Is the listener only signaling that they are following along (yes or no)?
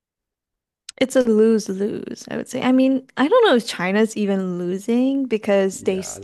yes